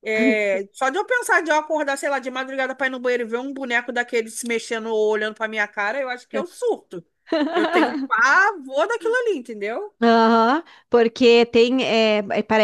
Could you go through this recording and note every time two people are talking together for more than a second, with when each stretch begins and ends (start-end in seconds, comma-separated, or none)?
none